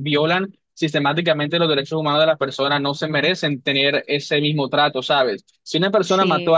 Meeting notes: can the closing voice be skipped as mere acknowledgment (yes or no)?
yes